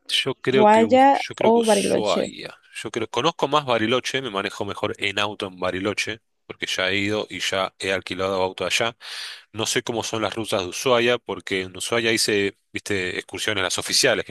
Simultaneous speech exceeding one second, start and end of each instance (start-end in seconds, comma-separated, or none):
0.5-2.3